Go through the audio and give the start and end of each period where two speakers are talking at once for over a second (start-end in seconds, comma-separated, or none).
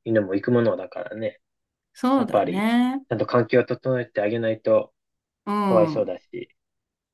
none